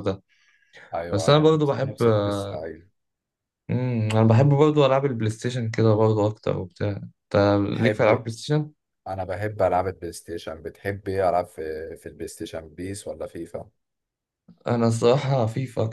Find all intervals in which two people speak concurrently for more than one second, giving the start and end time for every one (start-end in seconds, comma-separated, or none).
1.1-2.6